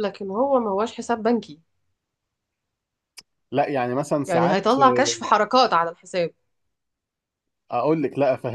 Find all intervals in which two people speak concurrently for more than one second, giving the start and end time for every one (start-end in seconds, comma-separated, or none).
none